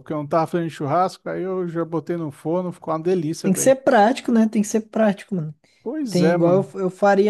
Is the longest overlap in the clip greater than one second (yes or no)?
no